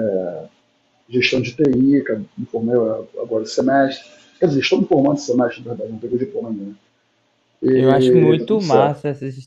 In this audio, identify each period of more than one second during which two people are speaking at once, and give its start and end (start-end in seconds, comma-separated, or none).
7.7-9.0